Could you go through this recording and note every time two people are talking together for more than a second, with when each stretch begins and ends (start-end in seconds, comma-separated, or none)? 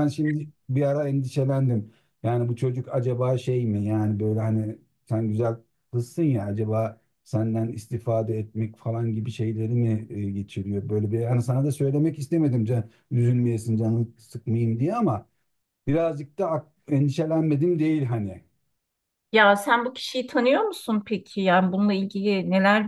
none